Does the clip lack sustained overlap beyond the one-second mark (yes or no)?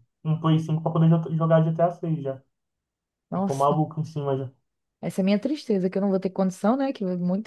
yes